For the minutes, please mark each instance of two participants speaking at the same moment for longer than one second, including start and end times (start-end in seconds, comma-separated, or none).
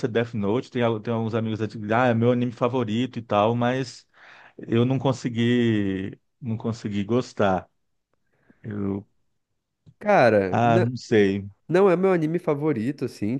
none